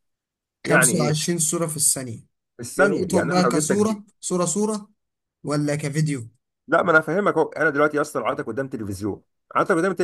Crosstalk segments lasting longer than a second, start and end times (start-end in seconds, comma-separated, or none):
2.8-4.0